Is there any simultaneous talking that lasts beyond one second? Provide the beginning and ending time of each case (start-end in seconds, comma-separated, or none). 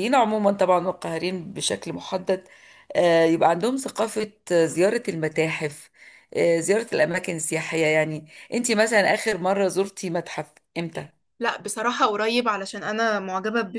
none